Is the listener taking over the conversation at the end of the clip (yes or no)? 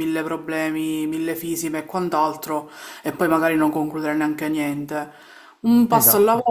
no